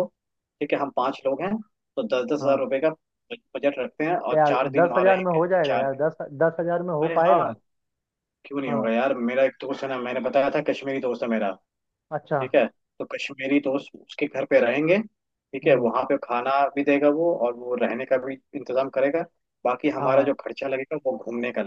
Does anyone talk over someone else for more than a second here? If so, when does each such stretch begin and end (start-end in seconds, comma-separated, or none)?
4.3-6.0